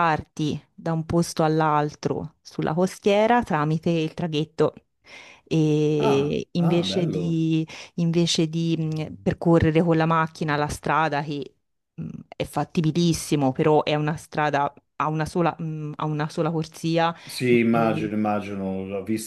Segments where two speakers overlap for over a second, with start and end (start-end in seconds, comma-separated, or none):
6.0-7.4